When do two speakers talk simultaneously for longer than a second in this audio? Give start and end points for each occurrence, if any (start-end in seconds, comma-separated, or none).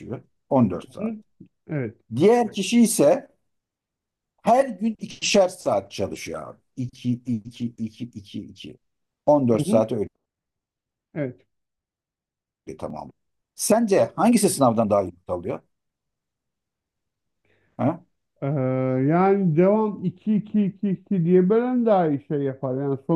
none